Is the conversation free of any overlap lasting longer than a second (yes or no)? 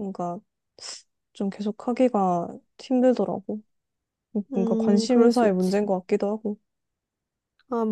no